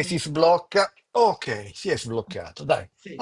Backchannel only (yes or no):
no